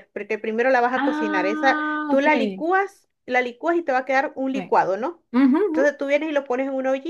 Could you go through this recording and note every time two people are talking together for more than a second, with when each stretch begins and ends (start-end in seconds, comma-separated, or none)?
0.9-2.6